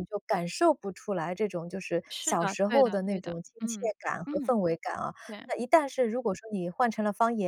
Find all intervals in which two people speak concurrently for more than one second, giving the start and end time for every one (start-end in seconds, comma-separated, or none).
2.1-4.5